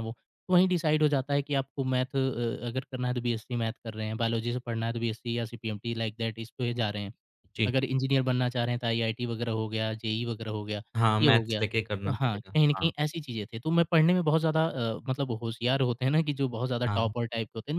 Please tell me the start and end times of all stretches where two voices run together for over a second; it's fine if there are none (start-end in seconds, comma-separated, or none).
11.2-12.9